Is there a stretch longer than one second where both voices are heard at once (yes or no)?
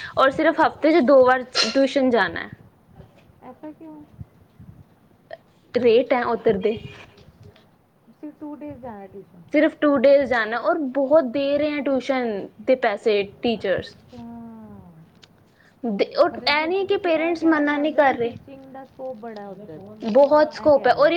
no